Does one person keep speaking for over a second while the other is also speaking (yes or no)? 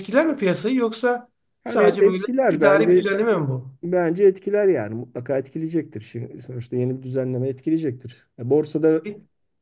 yes